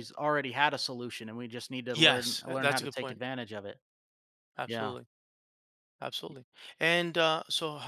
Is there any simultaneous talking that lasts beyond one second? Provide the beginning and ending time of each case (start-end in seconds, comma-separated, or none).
1.9-3.2